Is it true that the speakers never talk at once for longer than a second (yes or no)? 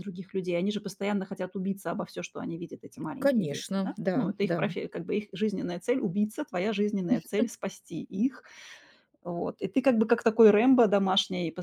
no